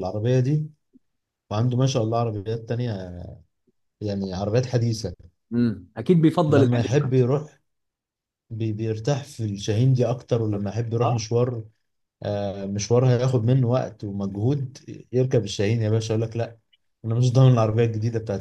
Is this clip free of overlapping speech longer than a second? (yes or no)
yes